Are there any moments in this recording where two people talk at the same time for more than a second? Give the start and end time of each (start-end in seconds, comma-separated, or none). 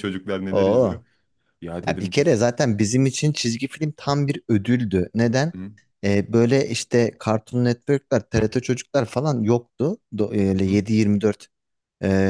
none